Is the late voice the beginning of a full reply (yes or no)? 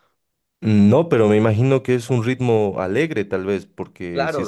yes